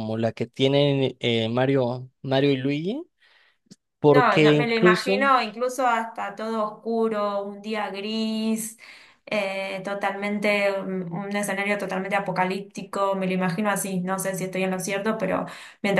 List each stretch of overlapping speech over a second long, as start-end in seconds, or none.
4.1-5.3